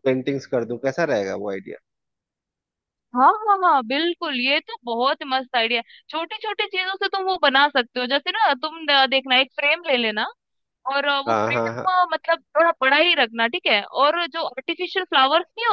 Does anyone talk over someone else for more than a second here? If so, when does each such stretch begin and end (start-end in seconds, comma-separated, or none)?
none